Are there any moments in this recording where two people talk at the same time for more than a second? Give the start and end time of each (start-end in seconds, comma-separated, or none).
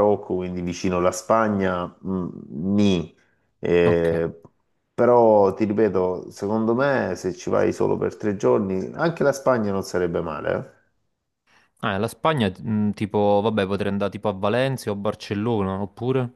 none